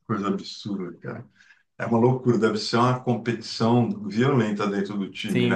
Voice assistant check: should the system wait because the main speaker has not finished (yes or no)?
no